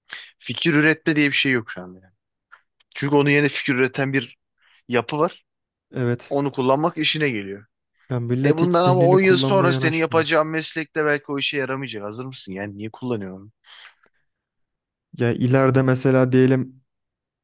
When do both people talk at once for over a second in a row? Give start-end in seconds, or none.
8.4-10.2